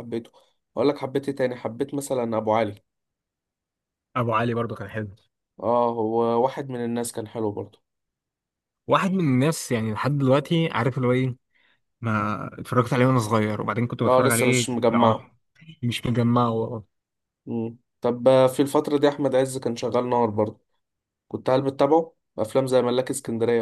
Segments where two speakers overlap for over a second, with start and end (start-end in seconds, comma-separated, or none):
14.1-15.3